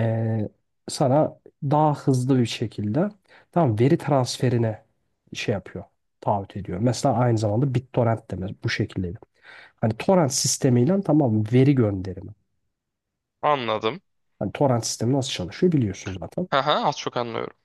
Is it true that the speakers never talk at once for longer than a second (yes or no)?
yes